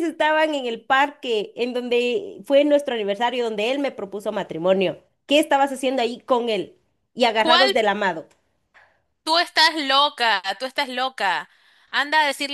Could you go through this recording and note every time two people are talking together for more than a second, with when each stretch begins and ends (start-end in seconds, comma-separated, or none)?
none